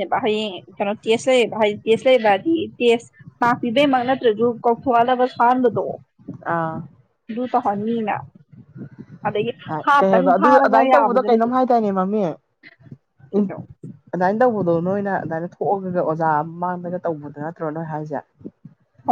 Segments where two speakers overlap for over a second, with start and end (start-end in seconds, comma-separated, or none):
10.0-11.5